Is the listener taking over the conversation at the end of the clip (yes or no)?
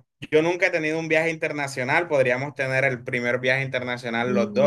yes